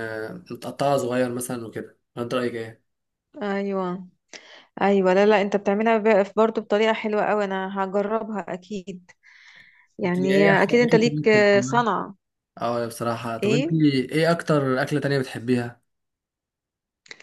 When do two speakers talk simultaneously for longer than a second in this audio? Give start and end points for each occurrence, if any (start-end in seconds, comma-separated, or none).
10.0-11.8